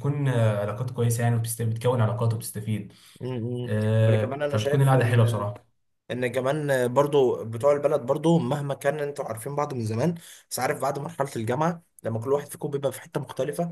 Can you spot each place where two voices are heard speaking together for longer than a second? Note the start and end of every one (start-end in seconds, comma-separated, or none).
3.6-5.4